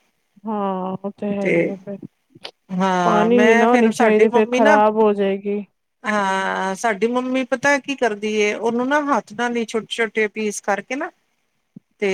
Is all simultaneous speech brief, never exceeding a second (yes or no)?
no